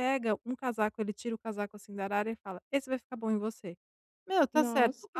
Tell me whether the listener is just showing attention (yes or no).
yes